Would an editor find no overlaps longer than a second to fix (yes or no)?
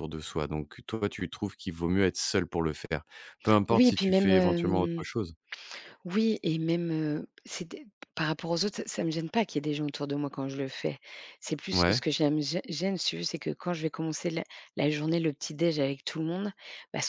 no